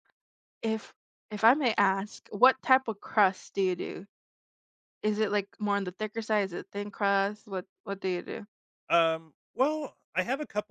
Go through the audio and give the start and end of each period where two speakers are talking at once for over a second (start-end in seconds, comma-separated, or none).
none